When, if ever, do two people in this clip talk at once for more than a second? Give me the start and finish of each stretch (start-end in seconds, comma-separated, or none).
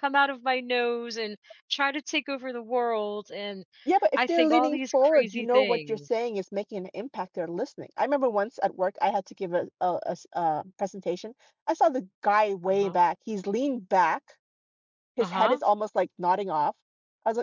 4.1-6.1